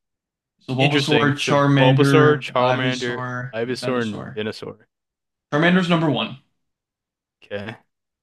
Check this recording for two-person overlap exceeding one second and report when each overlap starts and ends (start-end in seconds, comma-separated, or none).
0.8-4.4